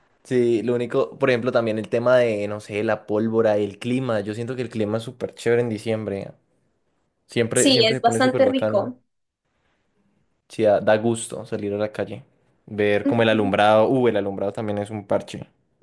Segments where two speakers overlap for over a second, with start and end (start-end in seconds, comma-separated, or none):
7.5-8.9